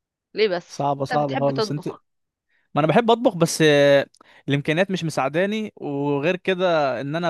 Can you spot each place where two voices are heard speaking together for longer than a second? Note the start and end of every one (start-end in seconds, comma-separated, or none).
0.7-1.9